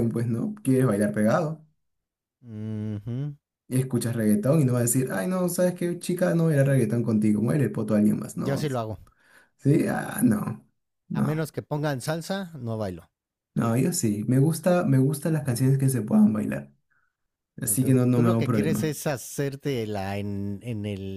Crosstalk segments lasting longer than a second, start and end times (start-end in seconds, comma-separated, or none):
17.6-19.0